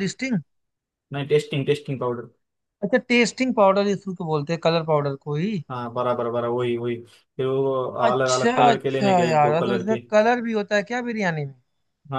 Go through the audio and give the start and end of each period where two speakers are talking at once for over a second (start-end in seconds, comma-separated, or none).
8.1-10.0